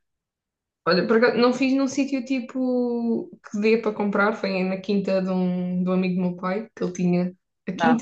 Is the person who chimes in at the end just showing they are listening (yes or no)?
yes